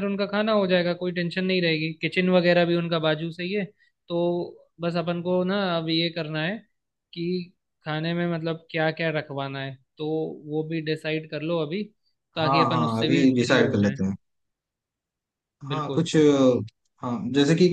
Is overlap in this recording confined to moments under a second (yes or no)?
no